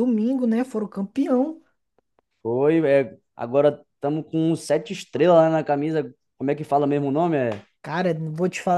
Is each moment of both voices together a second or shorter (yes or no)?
yes